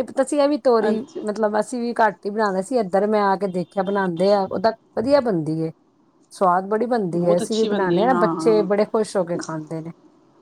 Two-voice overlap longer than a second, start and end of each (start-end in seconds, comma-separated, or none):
7.1-8.7